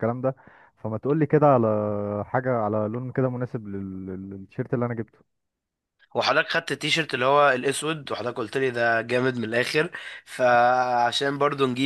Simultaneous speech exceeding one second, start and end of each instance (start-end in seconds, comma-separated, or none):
none